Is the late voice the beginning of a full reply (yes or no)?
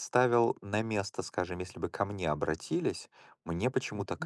no